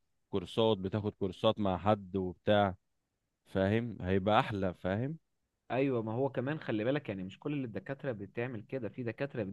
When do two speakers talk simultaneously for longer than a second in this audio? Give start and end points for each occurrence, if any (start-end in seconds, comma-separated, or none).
none